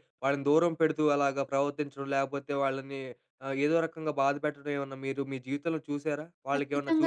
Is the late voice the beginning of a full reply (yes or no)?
yes